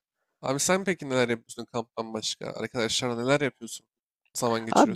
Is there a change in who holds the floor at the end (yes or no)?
yes